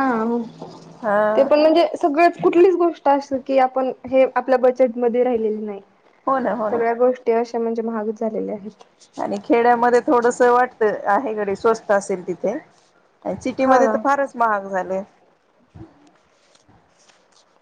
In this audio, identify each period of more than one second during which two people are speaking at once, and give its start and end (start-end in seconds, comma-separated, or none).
none